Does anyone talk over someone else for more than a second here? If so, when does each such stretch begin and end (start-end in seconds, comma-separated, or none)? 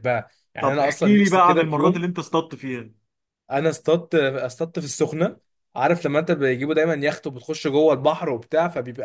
0.6-2.0